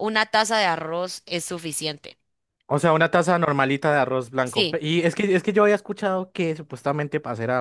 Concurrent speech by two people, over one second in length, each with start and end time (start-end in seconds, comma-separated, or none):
none